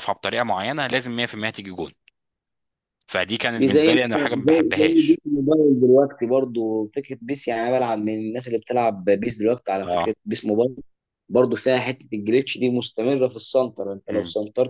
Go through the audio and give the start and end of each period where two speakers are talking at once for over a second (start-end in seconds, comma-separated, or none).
3.6-5.2